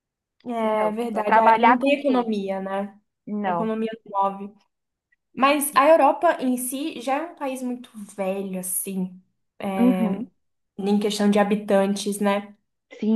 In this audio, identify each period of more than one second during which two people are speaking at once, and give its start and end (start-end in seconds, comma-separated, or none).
0.6-2.3